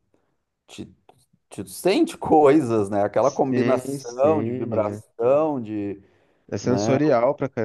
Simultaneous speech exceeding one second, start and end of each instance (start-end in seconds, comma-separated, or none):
3.2-5.0